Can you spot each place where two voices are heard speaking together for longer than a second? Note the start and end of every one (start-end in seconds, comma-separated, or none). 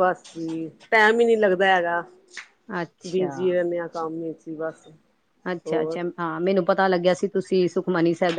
none